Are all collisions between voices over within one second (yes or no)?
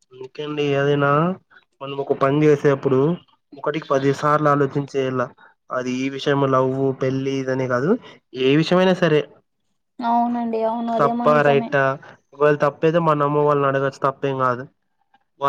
yes